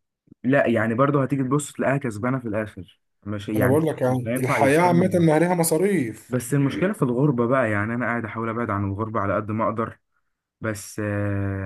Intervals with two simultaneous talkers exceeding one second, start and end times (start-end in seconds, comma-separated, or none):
3.5-5.3